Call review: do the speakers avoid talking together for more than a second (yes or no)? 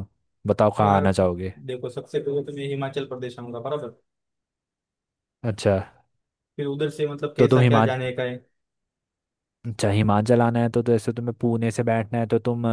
yes